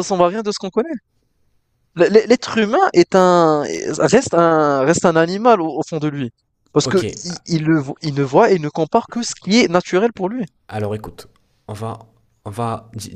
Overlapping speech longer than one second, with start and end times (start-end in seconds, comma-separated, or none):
none